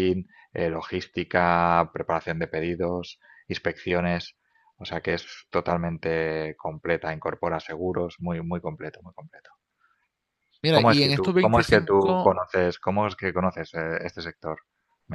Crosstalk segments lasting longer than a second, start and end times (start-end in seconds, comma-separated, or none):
10.7-12.3